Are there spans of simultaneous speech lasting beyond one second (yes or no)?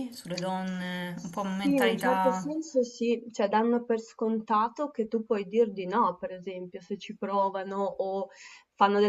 yes